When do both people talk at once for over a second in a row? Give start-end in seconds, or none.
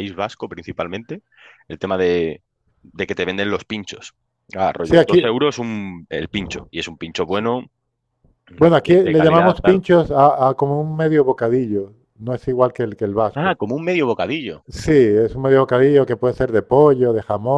8.6-9.8